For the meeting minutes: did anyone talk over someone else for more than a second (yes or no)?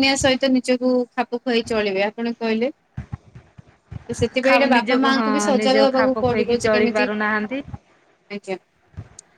yes